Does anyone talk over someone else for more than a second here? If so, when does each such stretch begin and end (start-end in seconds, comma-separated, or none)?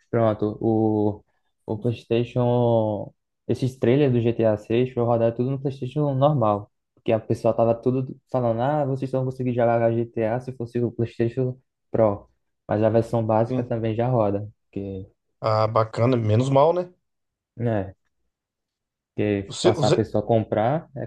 none